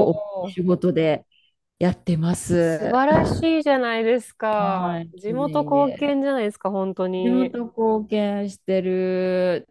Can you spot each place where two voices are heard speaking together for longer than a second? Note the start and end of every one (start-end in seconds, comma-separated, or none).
4.6-6.2